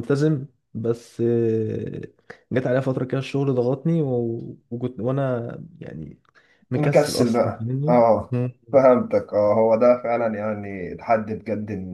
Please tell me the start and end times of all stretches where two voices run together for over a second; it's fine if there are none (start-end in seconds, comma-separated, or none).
6.7-8.3